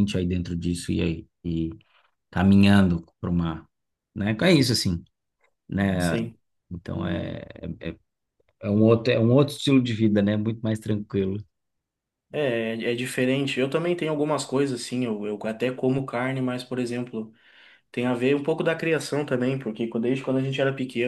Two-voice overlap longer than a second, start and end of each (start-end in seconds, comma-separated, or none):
none